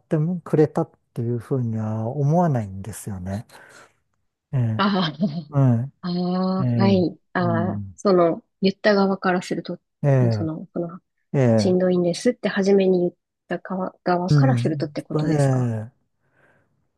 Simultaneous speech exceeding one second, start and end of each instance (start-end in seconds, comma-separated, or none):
14.3-15.7